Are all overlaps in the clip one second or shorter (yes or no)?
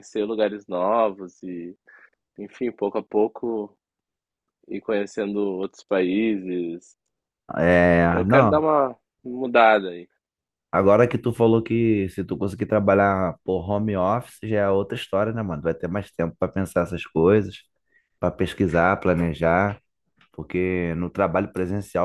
yes